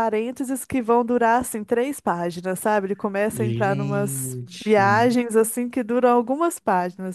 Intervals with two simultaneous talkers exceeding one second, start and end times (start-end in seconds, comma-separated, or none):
3.3-4.8